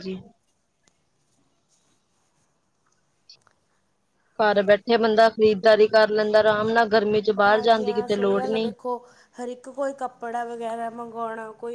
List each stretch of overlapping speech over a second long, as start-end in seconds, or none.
7.5-8.7